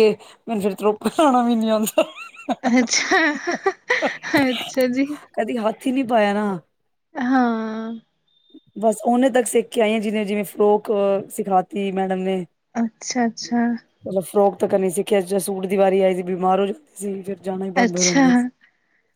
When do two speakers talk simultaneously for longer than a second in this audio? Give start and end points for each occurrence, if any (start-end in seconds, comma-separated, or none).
none